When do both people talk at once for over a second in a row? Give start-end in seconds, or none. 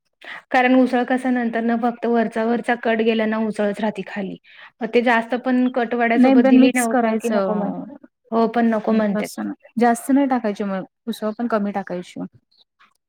6.2-7.7